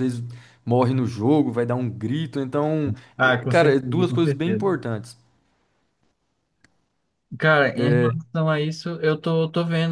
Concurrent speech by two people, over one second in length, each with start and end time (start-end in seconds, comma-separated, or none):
3.2-4.7